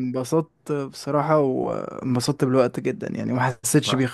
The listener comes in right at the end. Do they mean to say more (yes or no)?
yes